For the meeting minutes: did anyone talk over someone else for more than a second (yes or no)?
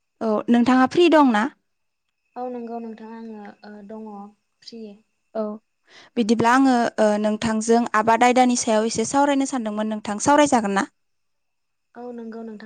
no